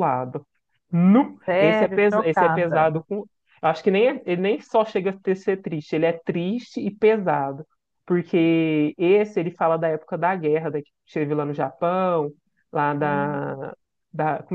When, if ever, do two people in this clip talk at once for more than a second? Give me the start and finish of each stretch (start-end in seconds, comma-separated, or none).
1.4-2.9